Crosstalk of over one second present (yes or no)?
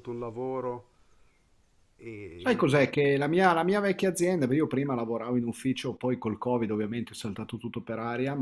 no